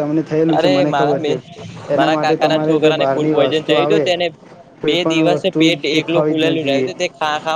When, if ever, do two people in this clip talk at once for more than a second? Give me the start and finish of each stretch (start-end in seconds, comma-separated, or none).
2.0-4.1, 4.9-6.9